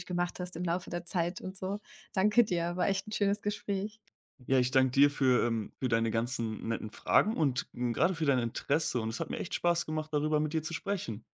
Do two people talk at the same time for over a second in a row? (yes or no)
no